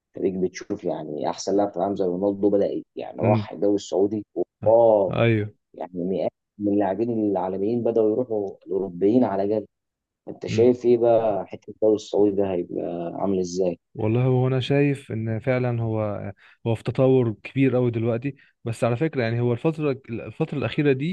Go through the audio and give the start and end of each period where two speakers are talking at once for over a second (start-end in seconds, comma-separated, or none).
none